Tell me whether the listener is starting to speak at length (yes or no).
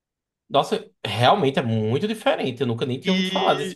yes